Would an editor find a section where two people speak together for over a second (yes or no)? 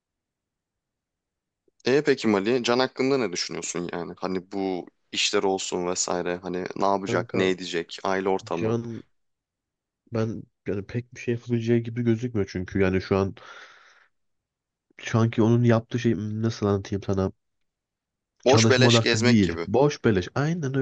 yes